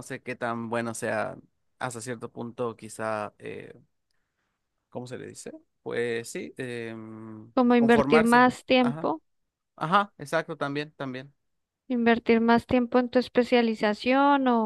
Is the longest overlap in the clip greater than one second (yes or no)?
yes